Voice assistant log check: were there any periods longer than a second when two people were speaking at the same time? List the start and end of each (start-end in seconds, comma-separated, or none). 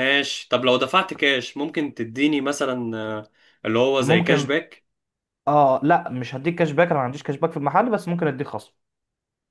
none